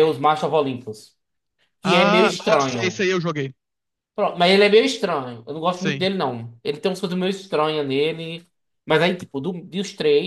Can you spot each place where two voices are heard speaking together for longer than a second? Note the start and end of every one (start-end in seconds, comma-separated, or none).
1.8-3.1